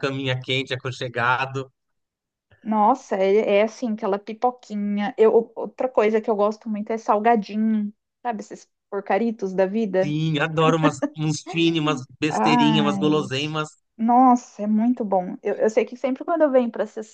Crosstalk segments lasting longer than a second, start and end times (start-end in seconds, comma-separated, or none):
12.3-13.6